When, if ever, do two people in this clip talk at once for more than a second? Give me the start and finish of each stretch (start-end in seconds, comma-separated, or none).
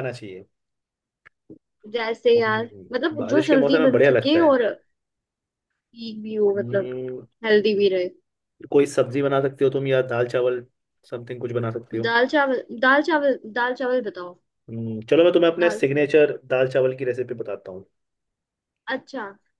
2.4-4.6